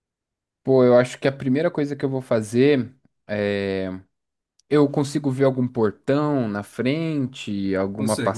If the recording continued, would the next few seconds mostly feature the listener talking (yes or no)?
yes